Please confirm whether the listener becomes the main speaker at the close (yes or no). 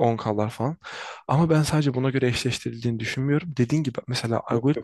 no